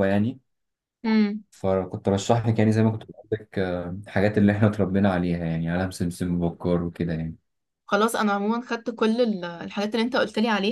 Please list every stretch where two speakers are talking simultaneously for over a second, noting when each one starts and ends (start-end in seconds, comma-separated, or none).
none